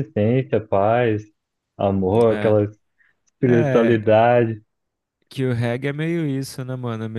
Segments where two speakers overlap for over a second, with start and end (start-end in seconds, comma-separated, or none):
none